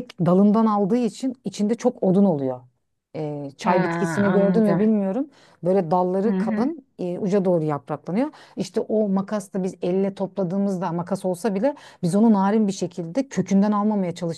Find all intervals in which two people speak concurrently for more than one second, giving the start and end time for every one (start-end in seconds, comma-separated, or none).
3.6-4.9